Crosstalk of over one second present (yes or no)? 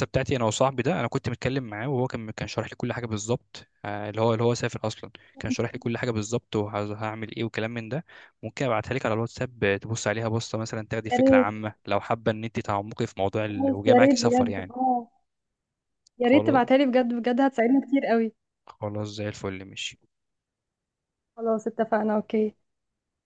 yes